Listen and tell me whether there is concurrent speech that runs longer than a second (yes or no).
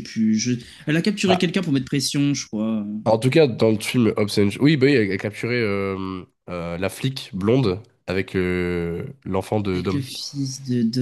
no